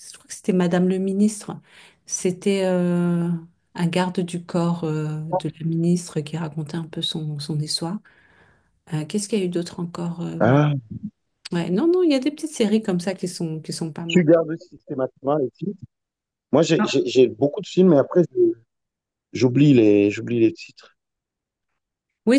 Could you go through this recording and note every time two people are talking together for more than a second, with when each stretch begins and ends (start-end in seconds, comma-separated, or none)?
none